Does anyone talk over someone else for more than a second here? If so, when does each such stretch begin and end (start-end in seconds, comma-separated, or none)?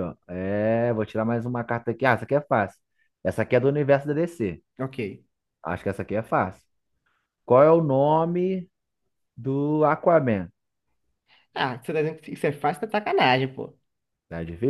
none